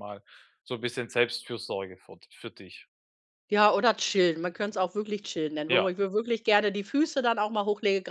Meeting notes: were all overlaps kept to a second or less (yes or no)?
yes